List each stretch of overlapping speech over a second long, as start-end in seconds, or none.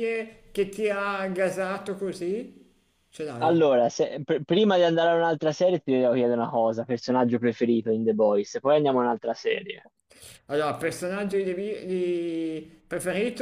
none